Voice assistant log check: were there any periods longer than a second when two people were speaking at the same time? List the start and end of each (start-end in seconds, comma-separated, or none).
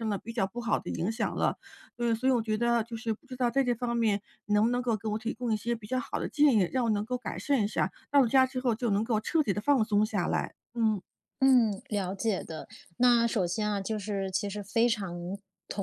none